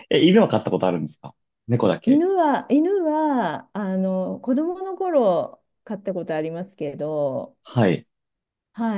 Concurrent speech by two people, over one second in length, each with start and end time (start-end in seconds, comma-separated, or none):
none